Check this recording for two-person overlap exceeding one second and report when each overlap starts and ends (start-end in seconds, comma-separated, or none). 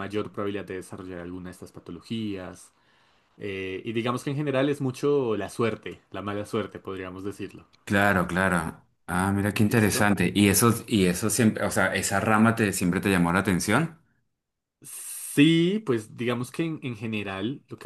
none